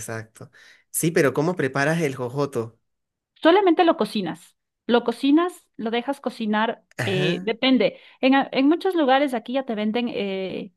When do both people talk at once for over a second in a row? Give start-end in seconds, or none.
none